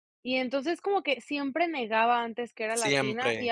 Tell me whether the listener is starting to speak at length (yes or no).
no